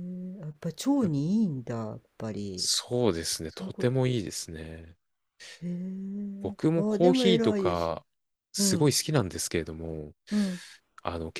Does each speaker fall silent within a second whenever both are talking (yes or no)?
no